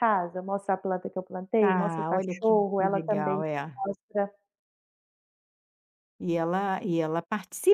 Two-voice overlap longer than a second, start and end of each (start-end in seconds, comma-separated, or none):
1.6-3.4